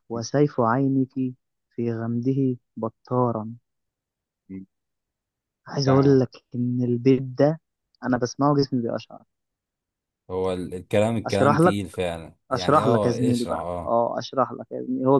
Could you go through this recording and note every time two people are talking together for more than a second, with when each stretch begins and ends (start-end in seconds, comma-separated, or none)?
12.5-14.0